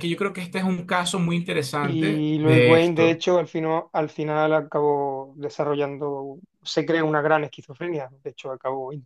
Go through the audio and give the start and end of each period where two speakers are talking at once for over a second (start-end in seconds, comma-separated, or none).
1.8-3.2